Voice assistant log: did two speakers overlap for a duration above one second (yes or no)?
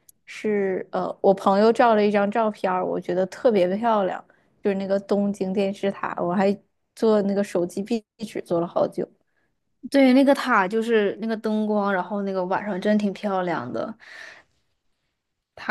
no